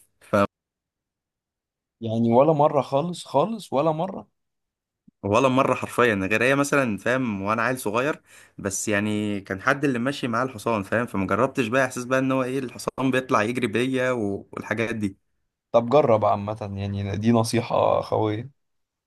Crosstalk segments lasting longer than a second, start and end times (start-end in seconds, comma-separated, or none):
none